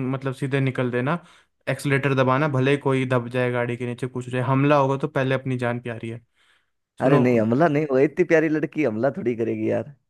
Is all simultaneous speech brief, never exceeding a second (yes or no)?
yes